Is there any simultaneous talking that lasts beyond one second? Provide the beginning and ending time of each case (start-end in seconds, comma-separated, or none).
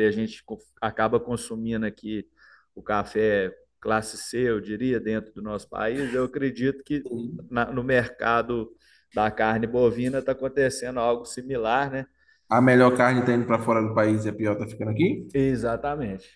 none